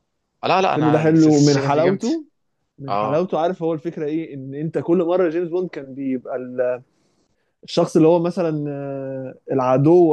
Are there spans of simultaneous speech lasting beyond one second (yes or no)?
yes